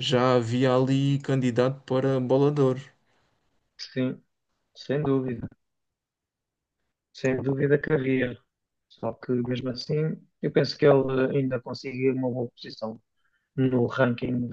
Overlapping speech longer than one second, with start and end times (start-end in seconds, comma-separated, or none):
none